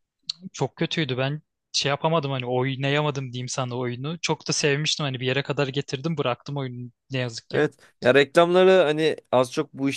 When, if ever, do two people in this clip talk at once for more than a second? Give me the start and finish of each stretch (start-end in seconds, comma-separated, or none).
none